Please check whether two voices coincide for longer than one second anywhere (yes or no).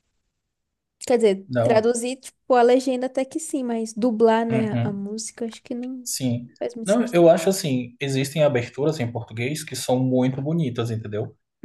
no